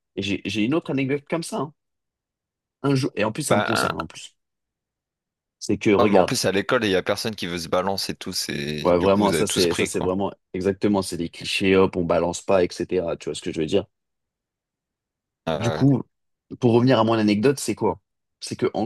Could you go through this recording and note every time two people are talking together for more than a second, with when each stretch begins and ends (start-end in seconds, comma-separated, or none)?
8.8-10.1